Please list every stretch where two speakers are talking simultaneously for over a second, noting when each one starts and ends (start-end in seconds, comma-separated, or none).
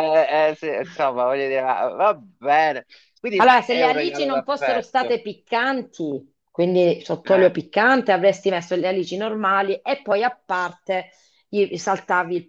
3.4-5.1